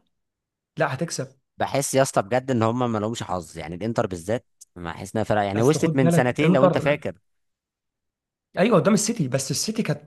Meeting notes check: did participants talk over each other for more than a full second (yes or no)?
yes